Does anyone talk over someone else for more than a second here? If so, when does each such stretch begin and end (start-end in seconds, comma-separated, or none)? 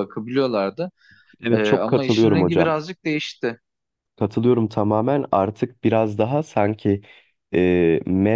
1.5-2.8